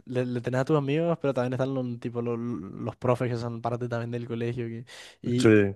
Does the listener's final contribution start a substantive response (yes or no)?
no